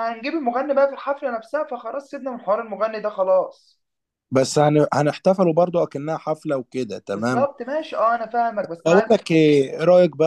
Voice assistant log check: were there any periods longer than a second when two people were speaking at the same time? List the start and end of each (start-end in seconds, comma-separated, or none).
none